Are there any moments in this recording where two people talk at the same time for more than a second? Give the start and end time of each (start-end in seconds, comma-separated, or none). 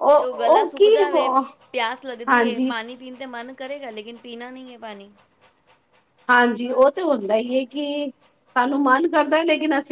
none